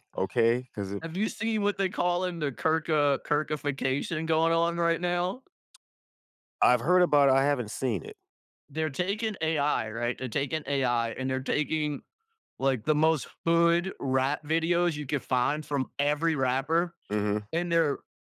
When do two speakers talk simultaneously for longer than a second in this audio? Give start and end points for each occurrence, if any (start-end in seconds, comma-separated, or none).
none